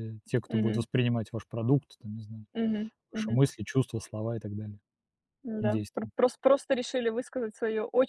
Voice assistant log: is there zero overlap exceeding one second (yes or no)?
yes